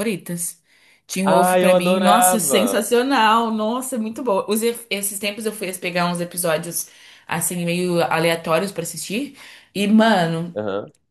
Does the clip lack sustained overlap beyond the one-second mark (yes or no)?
no